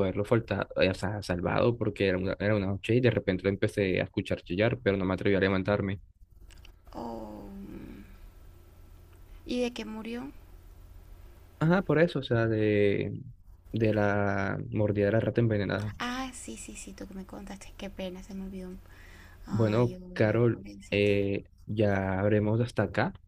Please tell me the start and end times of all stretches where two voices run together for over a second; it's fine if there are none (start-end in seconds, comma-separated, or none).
19.5-21.1